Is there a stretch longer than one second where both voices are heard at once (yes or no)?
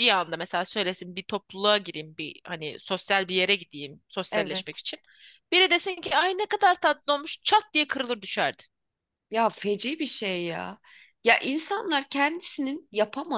no